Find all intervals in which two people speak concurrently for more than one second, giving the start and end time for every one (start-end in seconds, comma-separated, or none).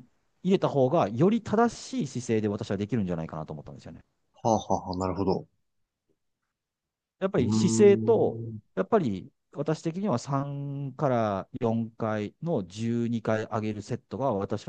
7.4-8.6